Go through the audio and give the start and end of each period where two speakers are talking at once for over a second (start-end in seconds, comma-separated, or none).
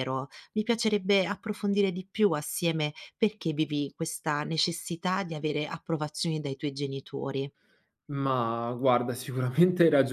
none